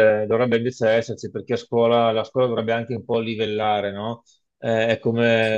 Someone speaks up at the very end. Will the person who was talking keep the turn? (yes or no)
yes